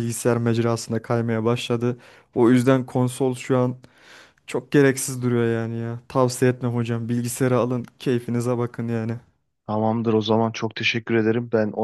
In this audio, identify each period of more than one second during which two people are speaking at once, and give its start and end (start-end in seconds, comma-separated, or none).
none